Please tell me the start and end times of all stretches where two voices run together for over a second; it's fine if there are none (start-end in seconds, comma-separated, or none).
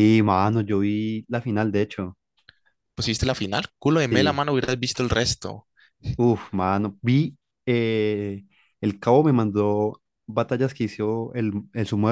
none